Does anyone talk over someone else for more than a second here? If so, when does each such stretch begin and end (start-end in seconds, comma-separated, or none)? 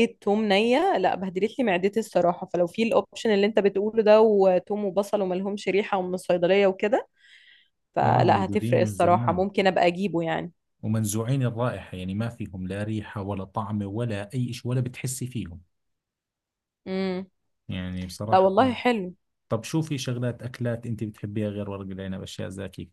8.0-9.5